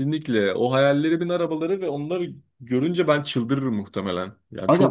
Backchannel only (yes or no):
no